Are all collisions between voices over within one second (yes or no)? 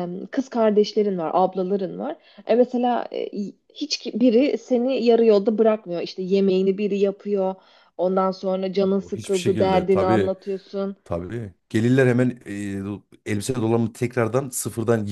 no